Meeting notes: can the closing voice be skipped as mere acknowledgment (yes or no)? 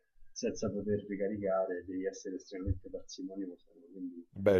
yes